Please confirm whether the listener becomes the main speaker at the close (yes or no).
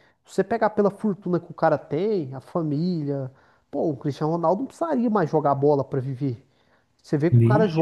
no